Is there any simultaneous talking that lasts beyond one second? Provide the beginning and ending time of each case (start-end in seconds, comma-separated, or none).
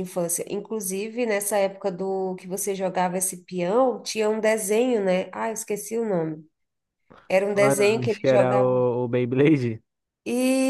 7.5-8.8